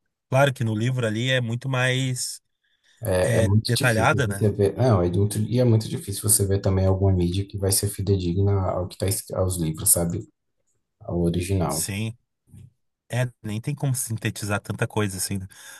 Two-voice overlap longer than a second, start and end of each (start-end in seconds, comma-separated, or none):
3.2-4.5